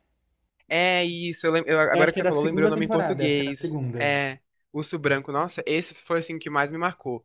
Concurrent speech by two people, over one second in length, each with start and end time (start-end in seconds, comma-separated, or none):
1.9-4.0